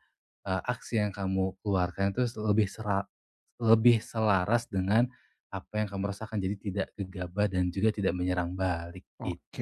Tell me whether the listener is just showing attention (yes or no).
no